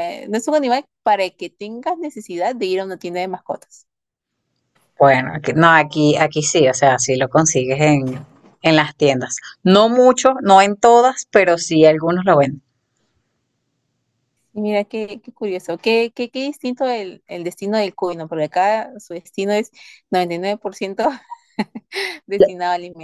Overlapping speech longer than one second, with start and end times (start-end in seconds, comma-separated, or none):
none